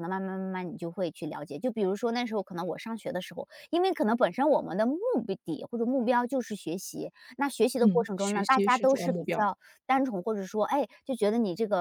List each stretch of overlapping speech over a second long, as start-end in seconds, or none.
7.8-9.5